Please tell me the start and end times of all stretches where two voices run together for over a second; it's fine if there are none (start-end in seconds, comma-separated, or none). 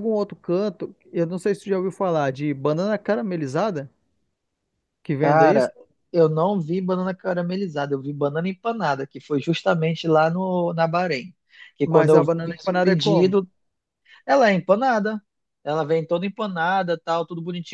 11.8-13.4